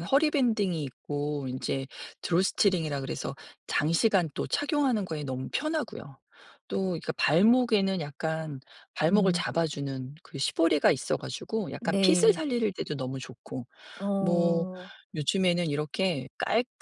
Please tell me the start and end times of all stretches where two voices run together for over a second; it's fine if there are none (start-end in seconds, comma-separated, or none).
none